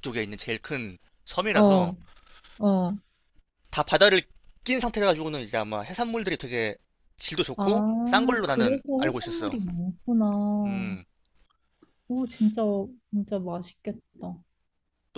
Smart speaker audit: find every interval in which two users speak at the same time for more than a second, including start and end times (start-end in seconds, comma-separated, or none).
7.6-9.6